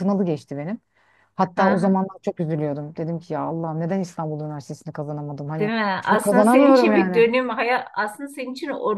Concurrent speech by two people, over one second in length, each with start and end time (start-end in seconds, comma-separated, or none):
5.6-7.2